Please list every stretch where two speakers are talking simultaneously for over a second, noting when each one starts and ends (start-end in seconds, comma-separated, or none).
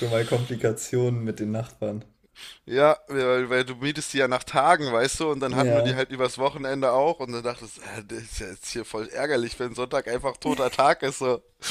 none